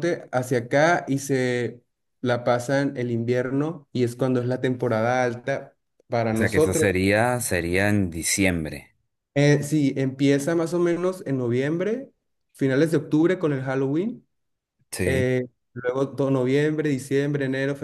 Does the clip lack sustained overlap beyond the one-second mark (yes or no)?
yes